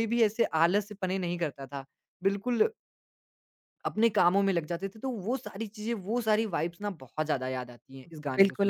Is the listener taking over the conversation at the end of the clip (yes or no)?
yes